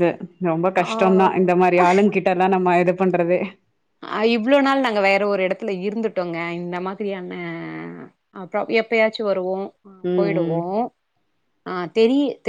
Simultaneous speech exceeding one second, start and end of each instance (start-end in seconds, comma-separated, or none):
none